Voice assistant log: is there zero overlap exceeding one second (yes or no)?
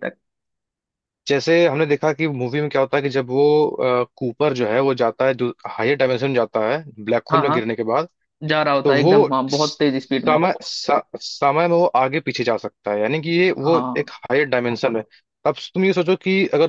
no